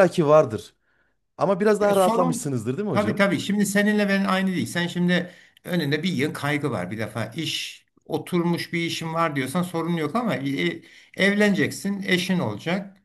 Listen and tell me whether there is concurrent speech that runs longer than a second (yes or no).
yes